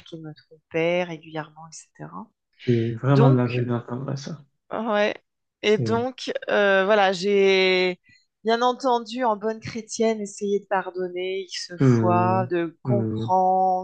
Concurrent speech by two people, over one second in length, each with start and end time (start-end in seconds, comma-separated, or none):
11.8-13.3